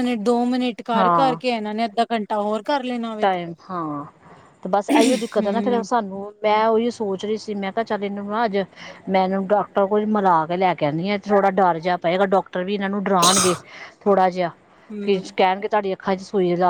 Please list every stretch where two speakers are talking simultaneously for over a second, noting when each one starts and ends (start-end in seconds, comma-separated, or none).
none